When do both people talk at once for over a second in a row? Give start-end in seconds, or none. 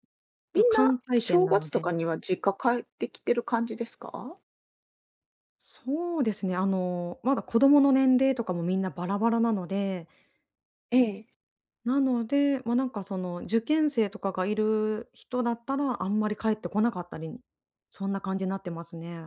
0.5-1.9